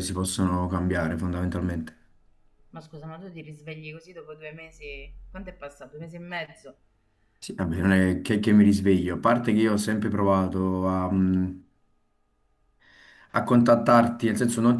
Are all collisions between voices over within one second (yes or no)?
yes